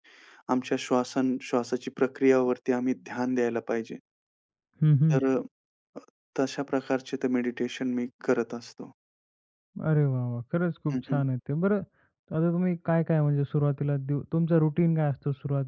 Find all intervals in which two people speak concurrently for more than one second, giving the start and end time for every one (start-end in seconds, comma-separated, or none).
none